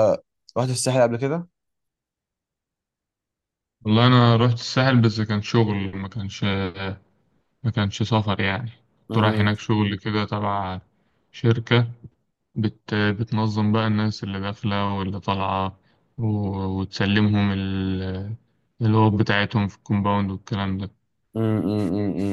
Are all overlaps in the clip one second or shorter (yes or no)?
yes